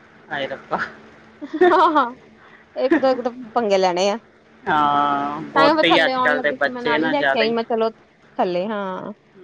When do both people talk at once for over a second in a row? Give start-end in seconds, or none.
5.5-7.1